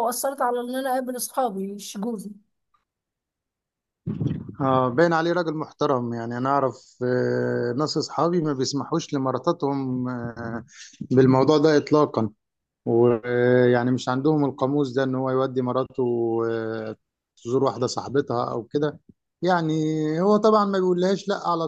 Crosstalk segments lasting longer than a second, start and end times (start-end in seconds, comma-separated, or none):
none